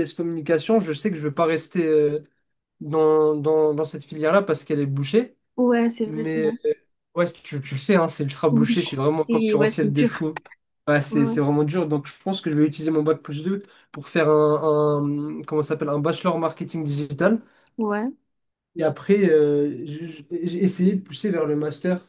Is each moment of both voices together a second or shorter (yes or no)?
no